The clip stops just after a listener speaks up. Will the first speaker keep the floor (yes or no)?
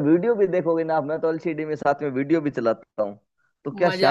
no